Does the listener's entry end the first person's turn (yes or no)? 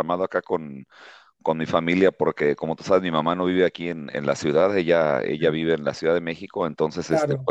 no